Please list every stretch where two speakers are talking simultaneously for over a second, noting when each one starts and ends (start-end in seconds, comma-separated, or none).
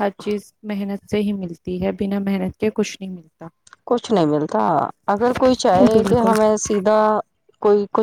none